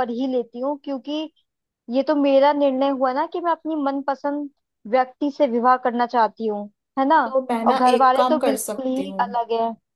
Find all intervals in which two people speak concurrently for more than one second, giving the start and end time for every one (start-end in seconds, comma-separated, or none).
7.7-9.3